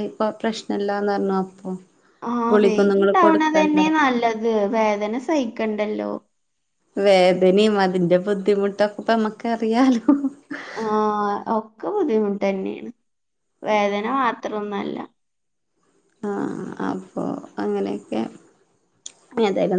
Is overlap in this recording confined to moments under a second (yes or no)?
no